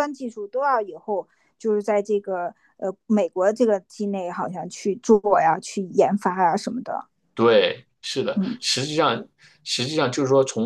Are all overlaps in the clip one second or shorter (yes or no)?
yes